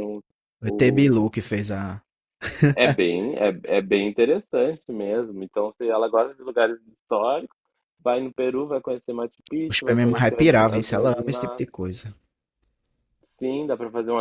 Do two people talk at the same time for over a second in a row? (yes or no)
yes